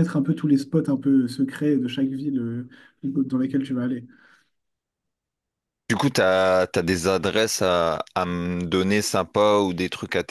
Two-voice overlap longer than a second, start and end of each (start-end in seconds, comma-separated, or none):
none